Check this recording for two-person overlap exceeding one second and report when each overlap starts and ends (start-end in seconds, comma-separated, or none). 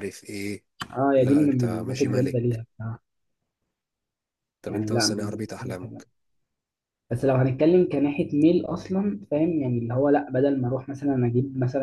1.1-2.6, 4.7-6.0